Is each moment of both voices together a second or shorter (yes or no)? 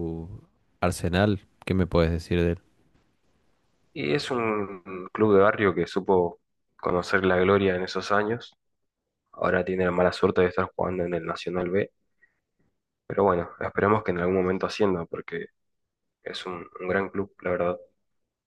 yes